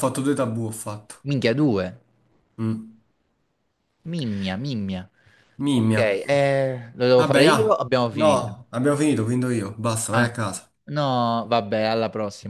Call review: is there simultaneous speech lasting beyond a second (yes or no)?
yes